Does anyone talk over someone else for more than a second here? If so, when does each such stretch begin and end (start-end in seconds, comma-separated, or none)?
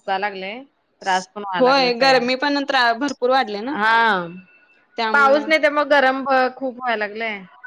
none